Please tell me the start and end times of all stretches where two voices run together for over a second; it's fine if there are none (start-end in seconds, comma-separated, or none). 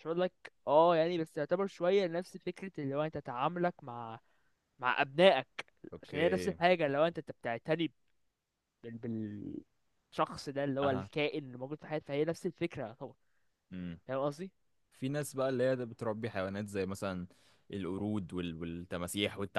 none